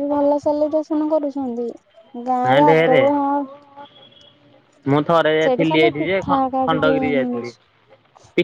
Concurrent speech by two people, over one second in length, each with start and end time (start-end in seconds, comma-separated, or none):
5.4-7.5